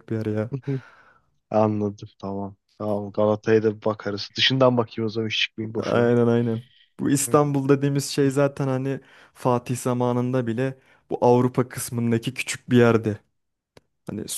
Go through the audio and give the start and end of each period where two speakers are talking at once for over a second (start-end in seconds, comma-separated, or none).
none